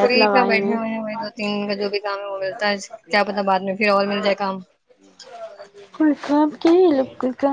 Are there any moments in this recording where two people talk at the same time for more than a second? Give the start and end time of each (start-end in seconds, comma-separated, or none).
none